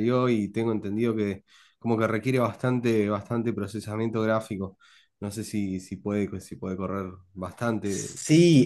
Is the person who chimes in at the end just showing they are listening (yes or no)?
no